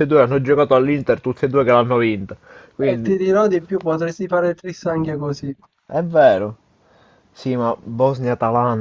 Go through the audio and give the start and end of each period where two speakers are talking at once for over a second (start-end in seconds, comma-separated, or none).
none